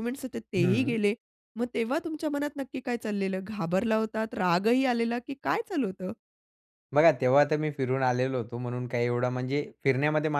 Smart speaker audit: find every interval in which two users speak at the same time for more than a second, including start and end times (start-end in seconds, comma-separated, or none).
none